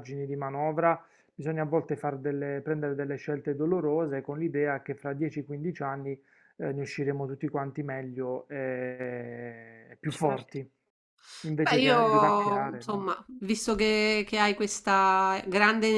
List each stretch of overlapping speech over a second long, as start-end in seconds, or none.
11.6-13.1